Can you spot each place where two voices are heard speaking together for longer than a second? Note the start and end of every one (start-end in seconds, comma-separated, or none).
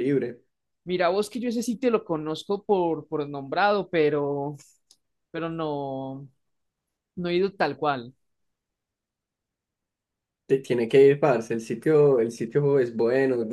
none